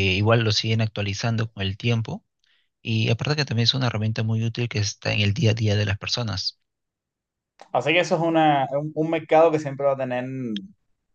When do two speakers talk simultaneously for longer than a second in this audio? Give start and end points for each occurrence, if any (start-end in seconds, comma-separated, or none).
none